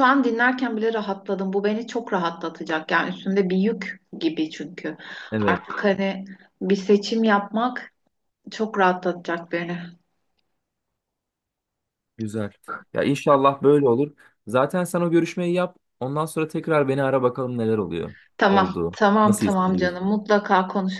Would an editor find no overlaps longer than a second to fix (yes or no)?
no